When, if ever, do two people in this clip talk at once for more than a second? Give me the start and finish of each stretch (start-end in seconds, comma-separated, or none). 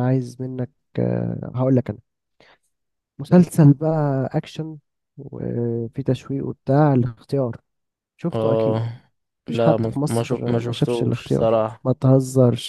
9.5-11.8